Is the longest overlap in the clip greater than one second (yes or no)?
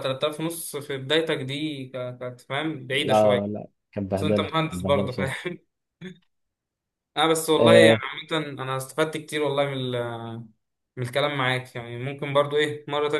yes